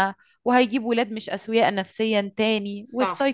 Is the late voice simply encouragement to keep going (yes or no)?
yes